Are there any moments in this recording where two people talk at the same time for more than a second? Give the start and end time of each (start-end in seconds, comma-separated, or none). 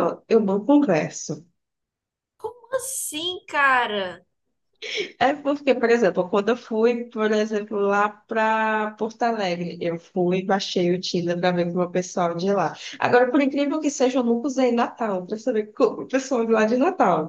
none